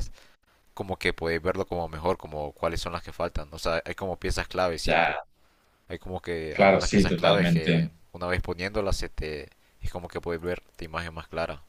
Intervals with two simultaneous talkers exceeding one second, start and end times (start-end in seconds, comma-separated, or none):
6.5-7.9